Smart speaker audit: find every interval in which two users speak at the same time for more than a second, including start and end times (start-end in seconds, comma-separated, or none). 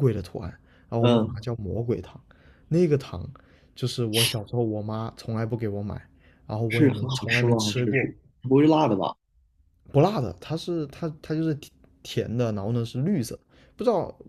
6.7-8.1